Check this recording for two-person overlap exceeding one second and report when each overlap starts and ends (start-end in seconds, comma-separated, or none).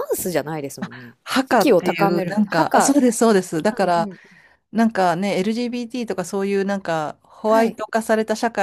0.8-3.0